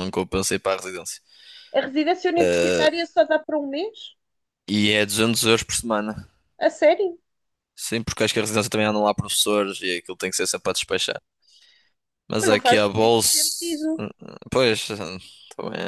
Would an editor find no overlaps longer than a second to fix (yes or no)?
no